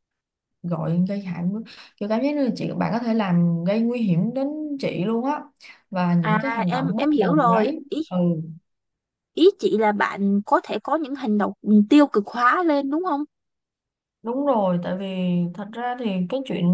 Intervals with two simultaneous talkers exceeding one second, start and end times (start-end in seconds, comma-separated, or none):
6.2-8.0